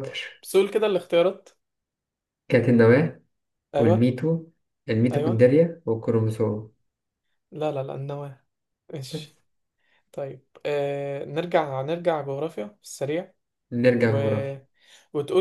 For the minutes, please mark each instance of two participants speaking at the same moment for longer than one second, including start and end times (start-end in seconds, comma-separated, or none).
none